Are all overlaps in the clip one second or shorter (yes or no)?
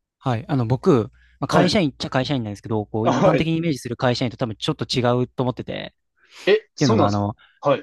yes